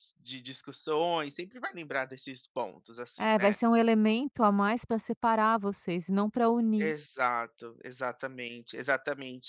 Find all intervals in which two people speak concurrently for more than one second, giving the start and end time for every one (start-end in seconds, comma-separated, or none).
none